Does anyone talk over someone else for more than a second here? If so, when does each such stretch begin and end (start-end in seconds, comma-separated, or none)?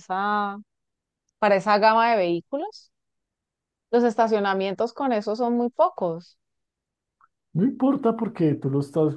none